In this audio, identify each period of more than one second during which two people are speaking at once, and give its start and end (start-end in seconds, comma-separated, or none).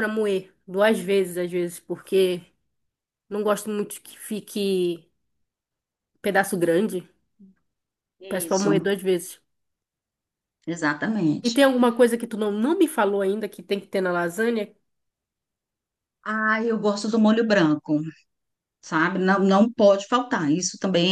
none